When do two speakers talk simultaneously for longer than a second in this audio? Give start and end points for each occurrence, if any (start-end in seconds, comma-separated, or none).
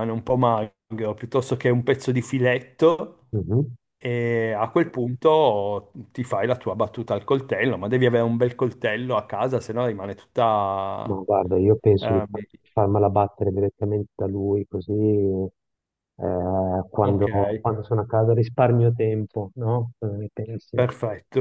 none